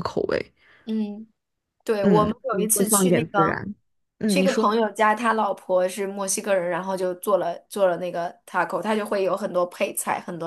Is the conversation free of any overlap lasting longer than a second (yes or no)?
no